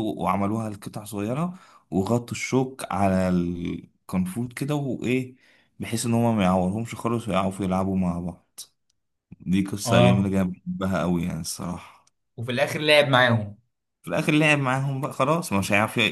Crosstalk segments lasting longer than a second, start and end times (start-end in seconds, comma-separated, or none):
none